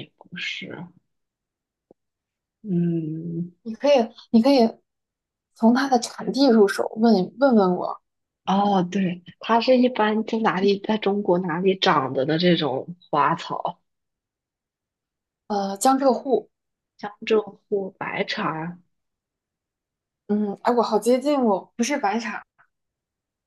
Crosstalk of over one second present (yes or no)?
no